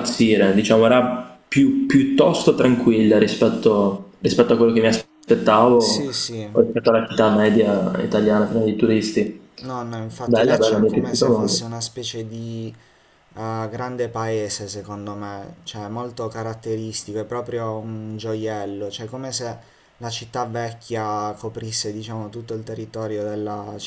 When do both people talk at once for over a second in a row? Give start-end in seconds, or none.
10.2-11.6